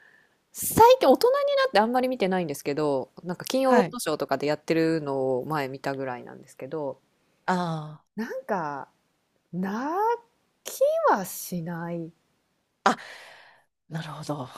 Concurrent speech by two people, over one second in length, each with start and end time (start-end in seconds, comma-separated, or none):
none